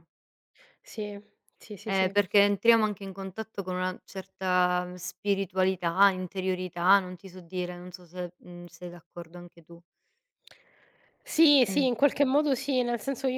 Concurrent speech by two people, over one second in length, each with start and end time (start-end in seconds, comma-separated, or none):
none